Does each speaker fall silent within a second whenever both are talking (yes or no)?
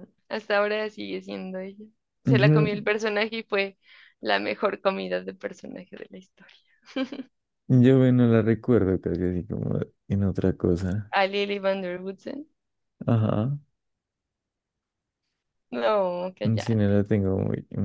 yes